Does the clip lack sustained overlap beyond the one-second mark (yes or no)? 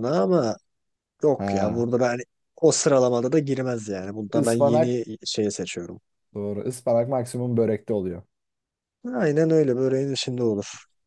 yes